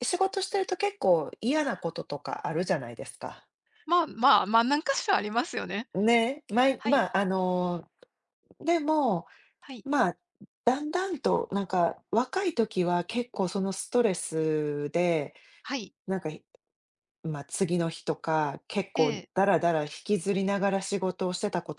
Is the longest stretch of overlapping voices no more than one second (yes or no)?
yes